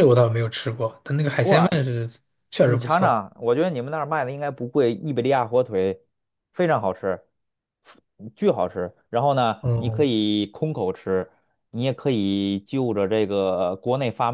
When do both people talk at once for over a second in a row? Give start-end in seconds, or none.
none